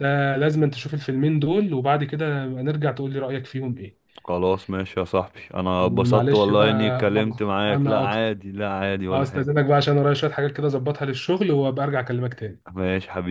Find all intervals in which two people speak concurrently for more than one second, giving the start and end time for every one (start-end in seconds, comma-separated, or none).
5.8-8.2